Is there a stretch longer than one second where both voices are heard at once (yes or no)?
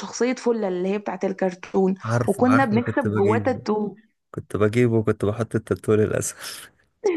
yes